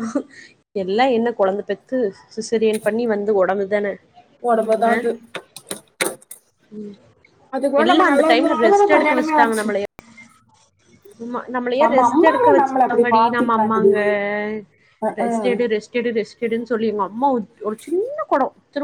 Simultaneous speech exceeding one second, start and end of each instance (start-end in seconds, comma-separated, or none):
11.8-13.9